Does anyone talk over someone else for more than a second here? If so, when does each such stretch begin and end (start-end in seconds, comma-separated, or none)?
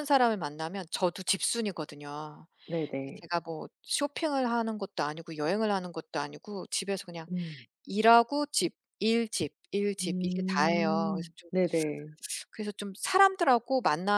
10.0-11.5